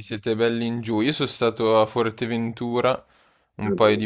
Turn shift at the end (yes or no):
no